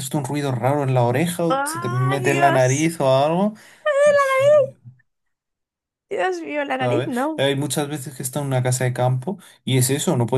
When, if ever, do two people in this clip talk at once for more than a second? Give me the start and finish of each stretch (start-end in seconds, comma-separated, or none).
1.5-2.9